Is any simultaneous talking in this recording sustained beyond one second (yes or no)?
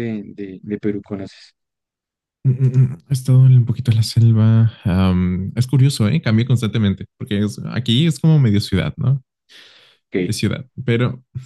no